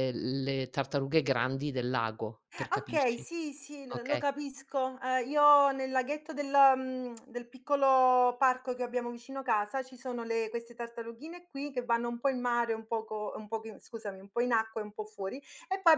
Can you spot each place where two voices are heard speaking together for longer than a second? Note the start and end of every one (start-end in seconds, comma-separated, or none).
none